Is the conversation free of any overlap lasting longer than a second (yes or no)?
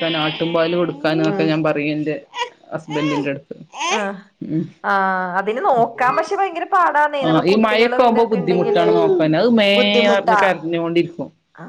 no